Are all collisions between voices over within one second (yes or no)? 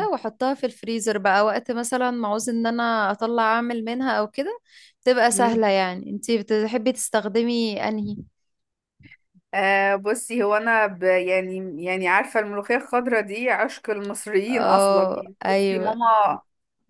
no